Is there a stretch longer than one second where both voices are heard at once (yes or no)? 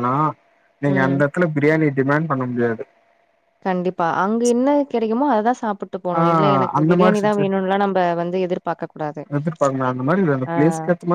no